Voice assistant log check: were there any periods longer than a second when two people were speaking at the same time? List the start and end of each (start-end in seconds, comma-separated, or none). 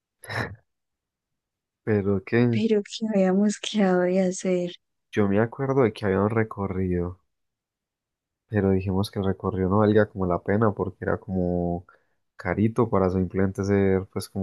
none